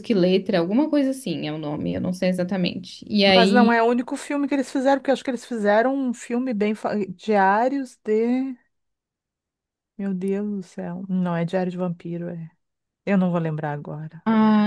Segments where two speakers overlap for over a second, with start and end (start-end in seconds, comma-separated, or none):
none